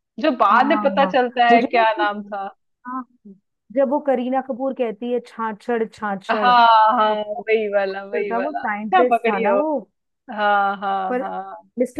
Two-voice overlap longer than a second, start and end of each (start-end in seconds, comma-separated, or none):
0.5-2.3, 6.3-9.6